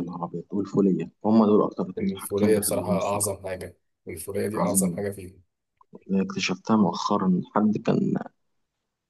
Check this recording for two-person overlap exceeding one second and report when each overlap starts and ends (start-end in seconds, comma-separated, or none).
2.0-3.3